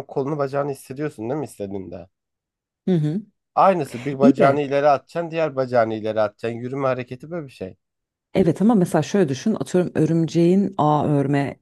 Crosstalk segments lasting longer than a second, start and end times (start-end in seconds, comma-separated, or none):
none